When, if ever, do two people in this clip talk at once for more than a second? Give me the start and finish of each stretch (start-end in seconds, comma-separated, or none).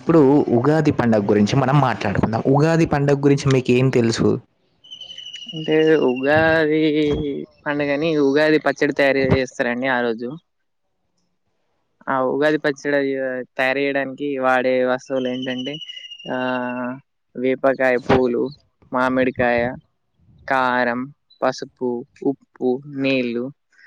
none